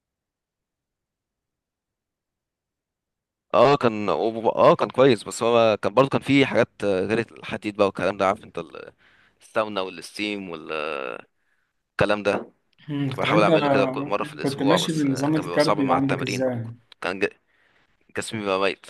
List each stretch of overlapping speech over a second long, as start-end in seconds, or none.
14.4-16.4